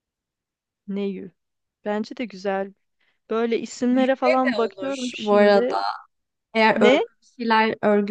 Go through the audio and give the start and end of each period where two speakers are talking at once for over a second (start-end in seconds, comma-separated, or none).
3.9-5.7